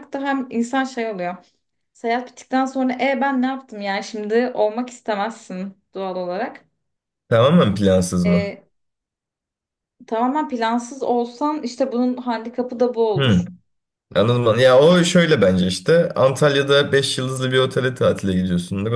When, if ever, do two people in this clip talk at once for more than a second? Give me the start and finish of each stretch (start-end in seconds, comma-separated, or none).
none